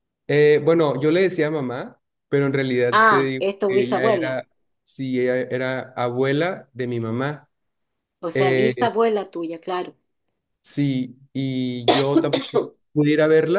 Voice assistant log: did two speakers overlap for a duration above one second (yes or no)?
yes